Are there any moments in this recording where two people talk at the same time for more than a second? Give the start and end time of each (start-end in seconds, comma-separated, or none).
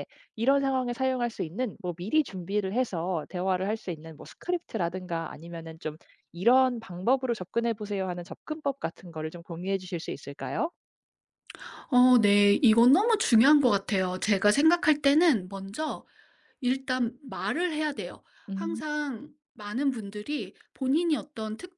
none